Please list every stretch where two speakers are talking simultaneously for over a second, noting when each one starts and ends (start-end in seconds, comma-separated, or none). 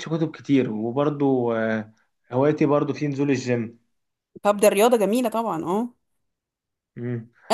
none